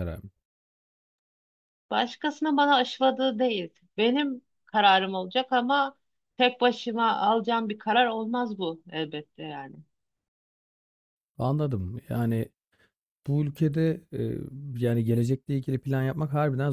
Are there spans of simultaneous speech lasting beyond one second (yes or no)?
no